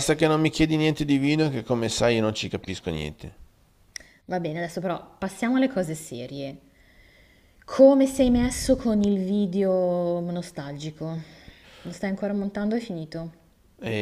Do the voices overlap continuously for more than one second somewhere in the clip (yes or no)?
no